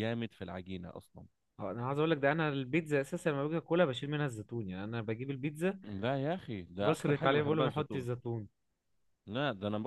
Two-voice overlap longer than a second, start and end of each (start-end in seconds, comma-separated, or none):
6.8-8.1